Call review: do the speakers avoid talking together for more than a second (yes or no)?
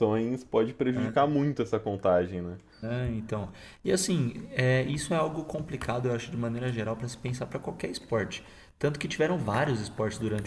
yes